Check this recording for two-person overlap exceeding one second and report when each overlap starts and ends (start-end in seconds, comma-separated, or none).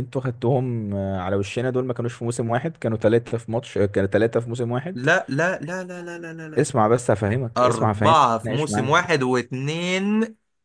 7.5-9.0